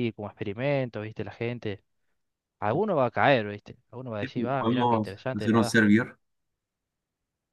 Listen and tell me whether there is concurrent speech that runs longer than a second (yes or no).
yes